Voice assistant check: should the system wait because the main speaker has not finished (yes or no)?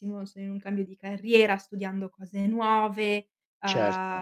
yes